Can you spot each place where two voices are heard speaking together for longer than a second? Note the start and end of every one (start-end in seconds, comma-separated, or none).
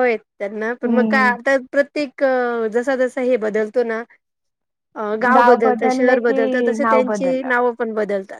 5.6-7.5